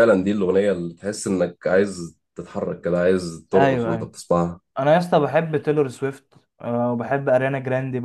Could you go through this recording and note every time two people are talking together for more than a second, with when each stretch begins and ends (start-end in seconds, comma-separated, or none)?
none